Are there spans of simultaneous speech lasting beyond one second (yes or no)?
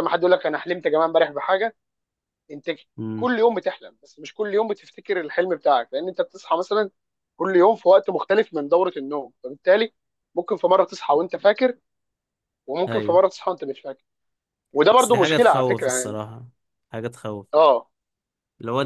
yes